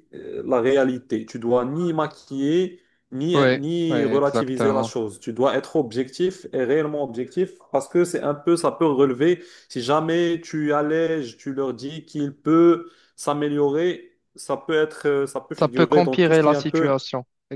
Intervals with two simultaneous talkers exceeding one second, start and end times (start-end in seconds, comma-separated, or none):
3.4-4.9, 15.6-16.9